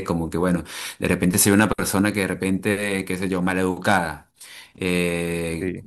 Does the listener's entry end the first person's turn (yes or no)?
no